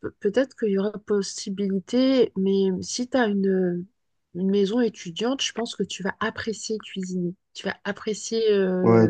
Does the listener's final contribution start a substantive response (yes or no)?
yes